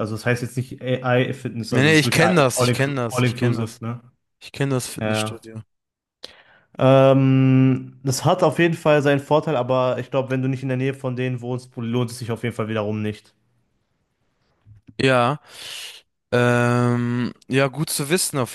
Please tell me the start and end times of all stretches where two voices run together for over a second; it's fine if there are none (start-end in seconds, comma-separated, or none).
1.7-3.8